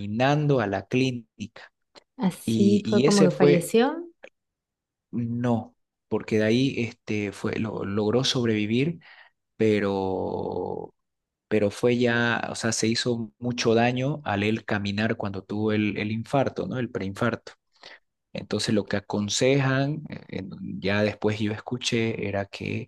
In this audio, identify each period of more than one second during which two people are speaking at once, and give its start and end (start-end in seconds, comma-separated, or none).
2.4-3.7